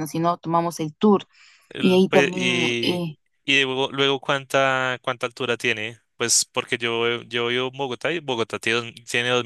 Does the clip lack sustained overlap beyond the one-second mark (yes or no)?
no